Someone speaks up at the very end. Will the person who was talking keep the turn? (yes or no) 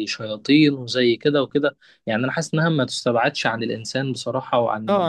no